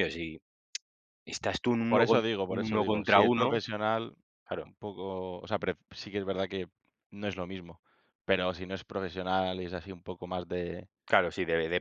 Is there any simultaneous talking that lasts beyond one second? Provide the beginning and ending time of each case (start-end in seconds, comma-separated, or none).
1.9-3.6